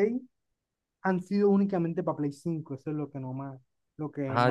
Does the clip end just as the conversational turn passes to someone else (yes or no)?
yes